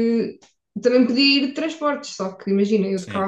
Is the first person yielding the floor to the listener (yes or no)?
no